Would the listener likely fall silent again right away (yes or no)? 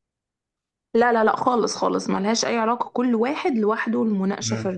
yes